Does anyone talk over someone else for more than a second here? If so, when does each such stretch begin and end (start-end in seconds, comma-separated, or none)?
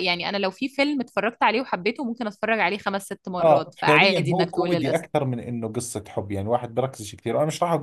3.4-5.2